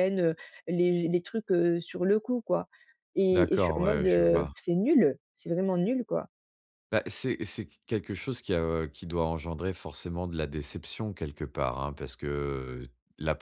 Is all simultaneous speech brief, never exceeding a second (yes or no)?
no